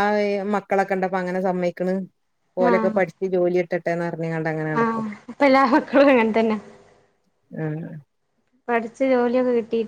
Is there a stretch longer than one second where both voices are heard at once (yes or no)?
no